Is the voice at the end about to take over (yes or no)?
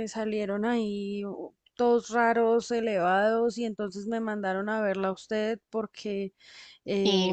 no